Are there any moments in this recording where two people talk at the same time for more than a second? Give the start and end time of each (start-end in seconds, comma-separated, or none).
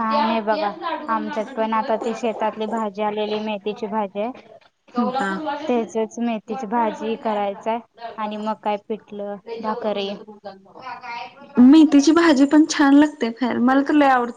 none